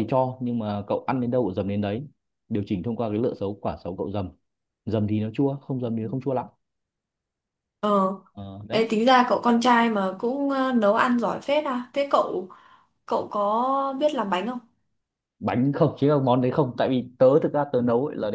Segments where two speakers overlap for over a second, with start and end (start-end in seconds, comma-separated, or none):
none